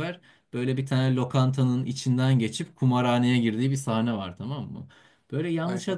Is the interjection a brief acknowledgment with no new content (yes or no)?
yes